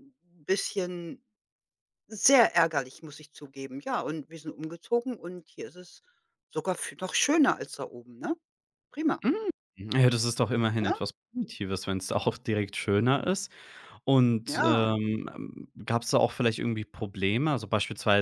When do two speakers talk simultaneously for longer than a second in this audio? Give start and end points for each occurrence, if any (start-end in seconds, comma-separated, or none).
none